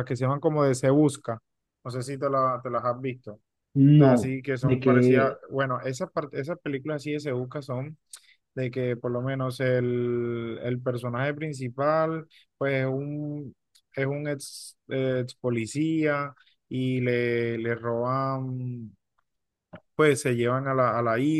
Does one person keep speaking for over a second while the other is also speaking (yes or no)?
yes